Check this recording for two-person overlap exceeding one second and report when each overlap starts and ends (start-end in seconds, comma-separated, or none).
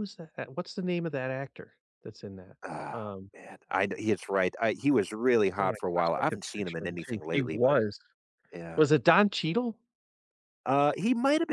5.6-7.8